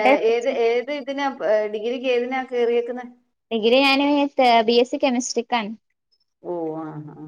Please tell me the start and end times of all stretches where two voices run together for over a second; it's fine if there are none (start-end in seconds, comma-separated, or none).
none